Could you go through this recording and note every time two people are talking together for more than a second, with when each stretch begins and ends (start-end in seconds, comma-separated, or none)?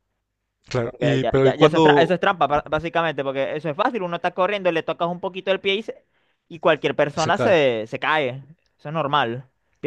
0.8-2.1